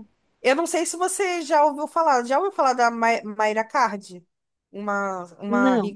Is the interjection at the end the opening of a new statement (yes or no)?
no